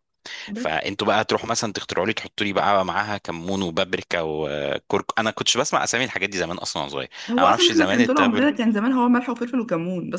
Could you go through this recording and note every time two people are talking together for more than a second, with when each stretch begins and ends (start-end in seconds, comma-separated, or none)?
7.3-8.5